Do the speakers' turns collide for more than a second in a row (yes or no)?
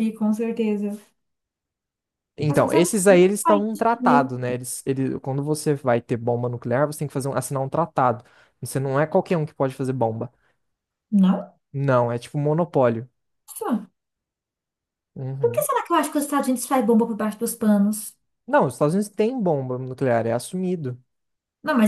yes